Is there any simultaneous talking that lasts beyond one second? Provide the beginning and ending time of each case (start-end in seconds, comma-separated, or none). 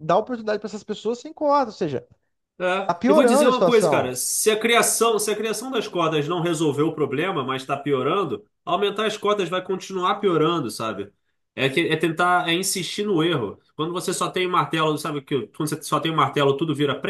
2.9-4.2